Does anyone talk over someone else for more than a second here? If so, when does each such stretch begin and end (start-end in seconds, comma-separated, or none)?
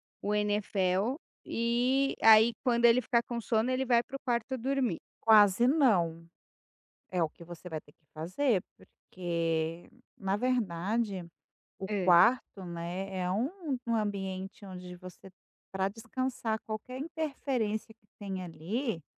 none